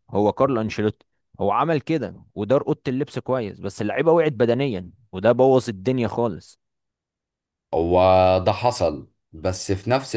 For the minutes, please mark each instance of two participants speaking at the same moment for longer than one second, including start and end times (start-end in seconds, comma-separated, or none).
none